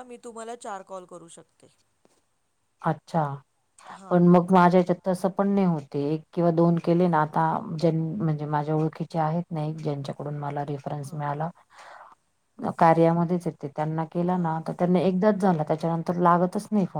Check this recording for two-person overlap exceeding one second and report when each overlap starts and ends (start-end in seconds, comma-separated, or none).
none